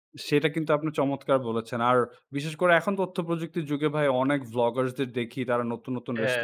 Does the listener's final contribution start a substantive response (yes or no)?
no